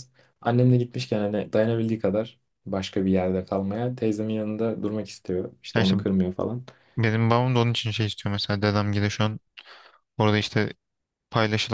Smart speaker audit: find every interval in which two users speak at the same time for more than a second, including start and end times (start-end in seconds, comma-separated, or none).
none